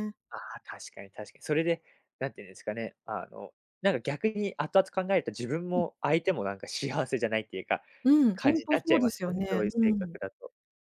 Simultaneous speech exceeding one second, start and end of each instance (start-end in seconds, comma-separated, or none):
8.3-10.2